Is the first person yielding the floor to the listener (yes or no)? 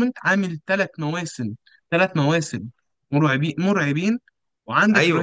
yes